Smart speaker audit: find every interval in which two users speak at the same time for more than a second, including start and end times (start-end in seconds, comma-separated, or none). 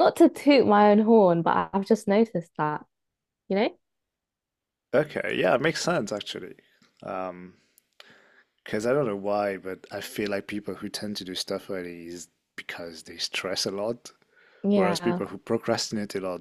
none